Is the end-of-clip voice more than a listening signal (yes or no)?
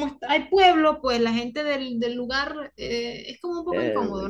yes